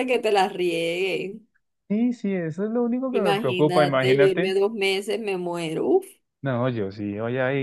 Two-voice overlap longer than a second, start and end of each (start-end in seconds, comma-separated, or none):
3.1-4.5